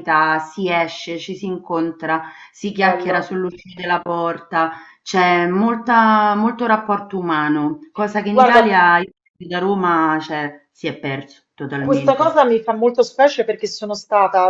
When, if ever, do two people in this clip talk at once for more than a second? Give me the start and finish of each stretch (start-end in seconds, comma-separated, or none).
none